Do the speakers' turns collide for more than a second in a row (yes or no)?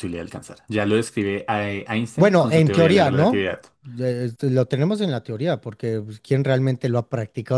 yes